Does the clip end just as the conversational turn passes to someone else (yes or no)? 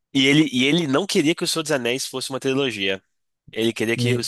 no